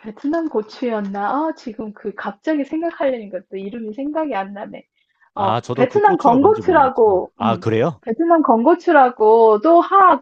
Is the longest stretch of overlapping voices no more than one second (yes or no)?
no